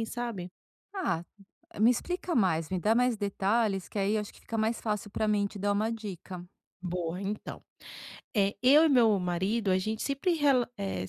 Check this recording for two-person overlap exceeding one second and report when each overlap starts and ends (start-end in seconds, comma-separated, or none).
none